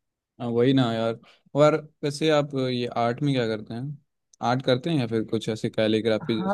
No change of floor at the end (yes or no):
no